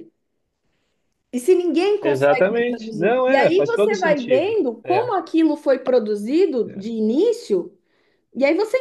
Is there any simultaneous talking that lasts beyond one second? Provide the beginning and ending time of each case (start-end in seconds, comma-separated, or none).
2.0-5.1